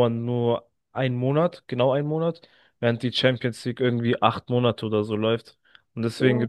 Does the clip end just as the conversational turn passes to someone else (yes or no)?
no